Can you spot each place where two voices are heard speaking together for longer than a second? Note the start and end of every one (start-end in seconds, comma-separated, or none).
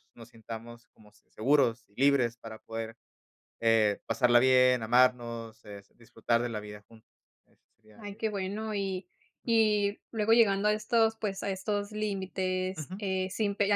none